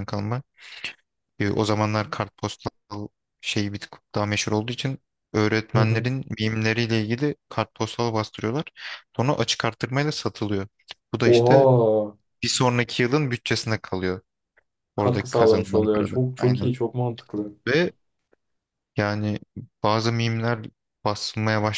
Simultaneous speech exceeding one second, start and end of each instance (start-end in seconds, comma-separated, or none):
14.9-16.7